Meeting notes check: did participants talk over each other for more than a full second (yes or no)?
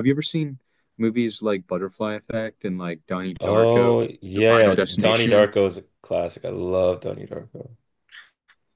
yes